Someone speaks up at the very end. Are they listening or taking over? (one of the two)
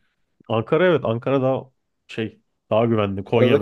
listening